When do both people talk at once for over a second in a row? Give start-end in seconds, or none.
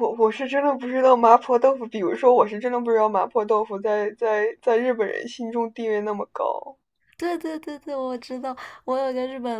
none